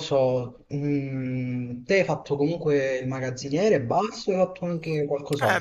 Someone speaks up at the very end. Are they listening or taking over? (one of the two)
taking over